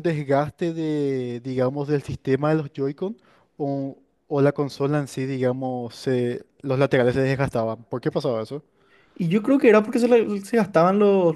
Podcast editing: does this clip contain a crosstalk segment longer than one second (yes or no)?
no